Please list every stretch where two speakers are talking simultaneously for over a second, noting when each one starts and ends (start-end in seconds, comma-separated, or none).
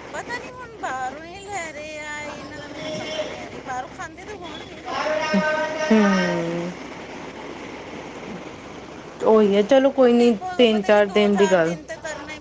10.0-11.8